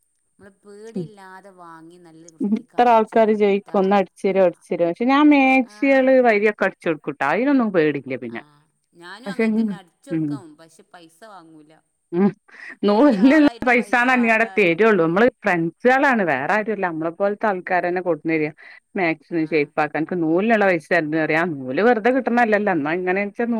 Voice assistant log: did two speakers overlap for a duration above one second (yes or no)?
yes